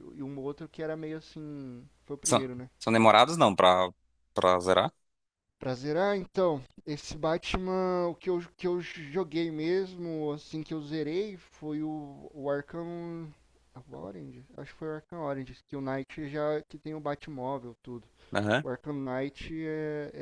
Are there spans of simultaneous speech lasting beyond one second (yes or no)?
no